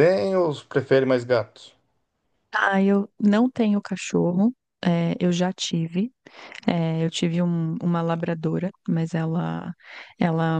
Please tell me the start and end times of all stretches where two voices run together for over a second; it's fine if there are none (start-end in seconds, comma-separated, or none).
none